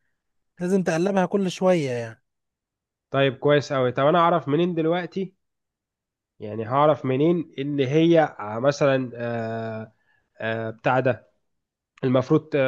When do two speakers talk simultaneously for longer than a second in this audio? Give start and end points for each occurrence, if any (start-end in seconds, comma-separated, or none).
none